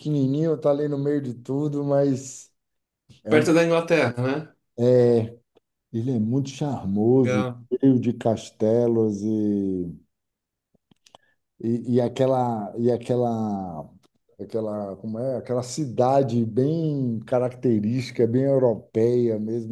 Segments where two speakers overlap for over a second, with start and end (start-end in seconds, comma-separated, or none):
none